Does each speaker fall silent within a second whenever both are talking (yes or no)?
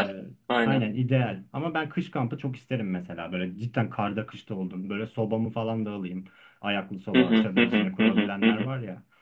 no